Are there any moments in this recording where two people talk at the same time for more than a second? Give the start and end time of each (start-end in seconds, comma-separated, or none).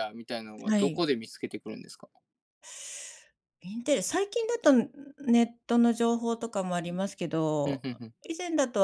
none